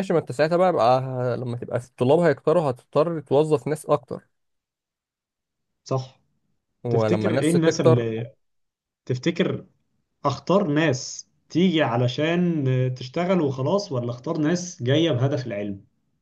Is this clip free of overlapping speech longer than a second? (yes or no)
no